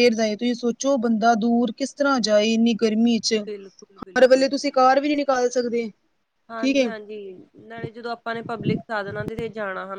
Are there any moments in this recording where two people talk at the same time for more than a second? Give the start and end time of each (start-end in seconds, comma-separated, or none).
none